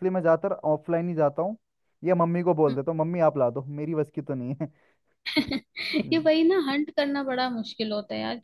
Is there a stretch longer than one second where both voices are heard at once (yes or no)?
no